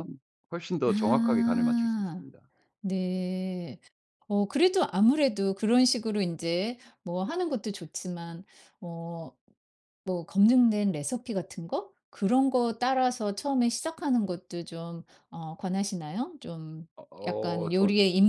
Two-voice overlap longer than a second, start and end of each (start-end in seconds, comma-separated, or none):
0.9-2.2